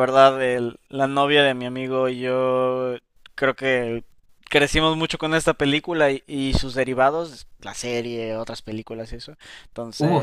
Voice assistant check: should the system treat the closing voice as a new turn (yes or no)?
no